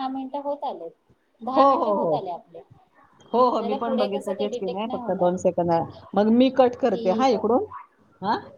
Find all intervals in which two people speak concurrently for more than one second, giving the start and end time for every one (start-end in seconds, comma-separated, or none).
3.5-5.3